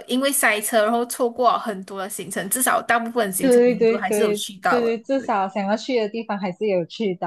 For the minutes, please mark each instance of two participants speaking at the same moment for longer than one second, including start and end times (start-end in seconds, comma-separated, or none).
3.4-5.3